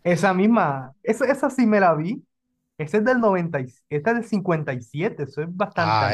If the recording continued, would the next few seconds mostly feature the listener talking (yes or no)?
yes